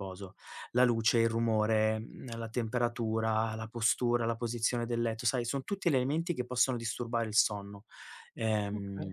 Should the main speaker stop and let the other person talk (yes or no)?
no